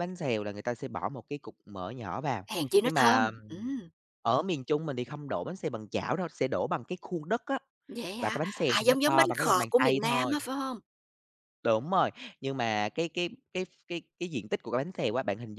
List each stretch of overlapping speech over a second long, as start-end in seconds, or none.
8.2-10.4